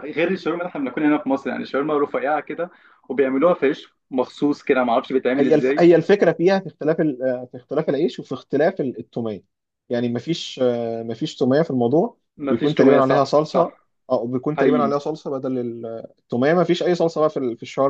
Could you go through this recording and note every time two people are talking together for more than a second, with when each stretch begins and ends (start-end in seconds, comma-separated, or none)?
12.4-13.7